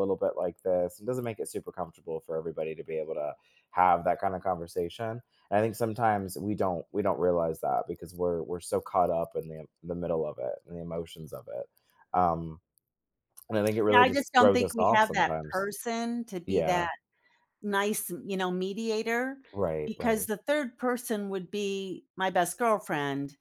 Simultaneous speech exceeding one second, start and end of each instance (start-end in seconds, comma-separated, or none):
13.9-15.7